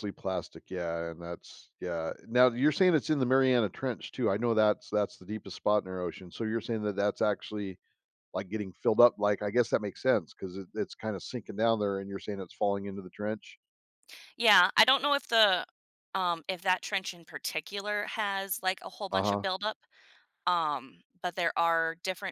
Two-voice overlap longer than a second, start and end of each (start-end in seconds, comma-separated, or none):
none